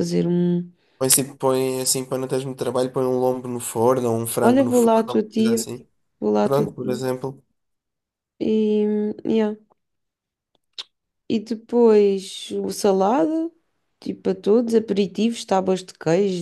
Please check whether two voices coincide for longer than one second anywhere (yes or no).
yes